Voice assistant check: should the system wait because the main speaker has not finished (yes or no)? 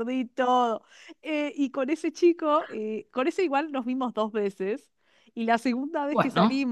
yes